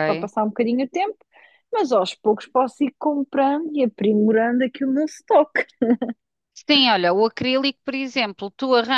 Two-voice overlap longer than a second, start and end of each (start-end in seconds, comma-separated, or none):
none